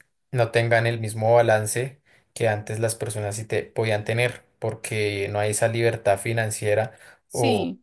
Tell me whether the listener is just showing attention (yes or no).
yes